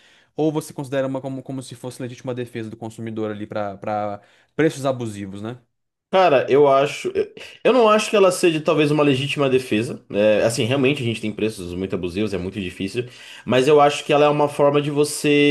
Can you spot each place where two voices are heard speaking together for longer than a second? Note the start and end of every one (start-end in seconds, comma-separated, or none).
none